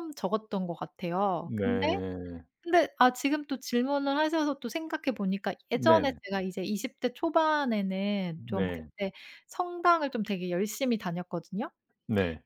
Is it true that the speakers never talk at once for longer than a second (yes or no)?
yes